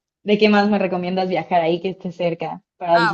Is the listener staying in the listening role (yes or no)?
no